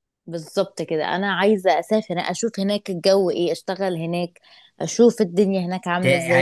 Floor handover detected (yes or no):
yes